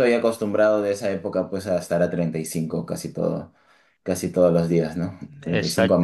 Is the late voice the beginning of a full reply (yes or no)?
yes